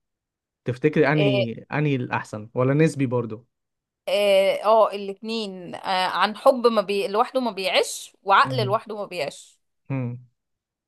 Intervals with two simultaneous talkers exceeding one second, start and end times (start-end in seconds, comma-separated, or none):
none